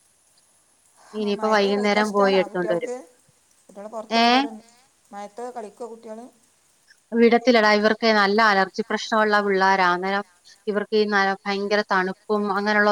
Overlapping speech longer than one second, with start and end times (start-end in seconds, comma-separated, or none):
1.2-2.9